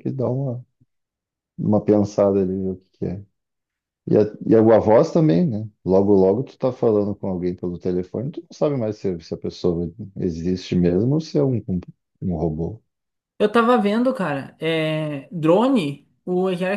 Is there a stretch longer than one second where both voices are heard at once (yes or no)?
no